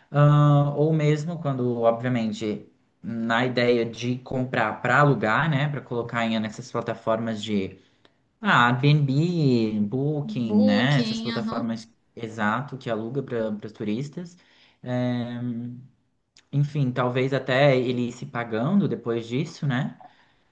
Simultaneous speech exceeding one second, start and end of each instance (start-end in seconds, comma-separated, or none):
10.2-11.8